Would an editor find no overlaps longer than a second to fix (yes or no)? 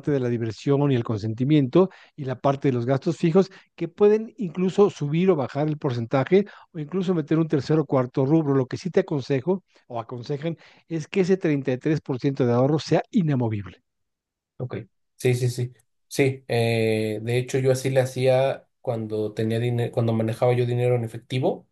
yes